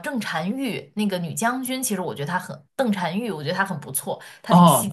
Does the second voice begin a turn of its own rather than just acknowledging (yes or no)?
yes